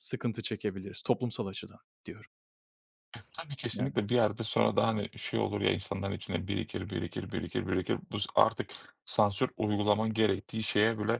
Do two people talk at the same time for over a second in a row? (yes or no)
no